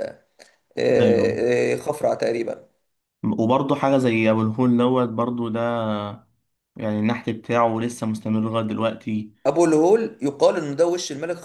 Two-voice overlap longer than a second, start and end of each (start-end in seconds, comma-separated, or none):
none